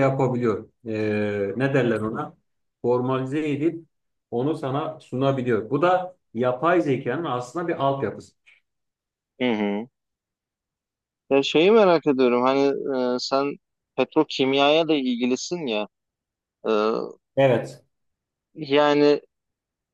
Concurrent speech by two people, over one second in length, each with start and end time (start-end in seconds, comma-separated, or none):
none